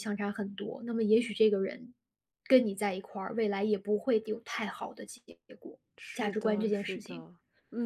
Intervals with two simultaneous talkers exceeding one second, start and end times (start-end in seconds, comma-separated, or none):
6.0-7.2